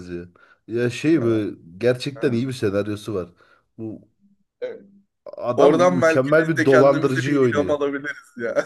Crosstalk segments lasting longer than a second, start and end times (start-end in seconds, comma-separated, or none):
5.6-7.8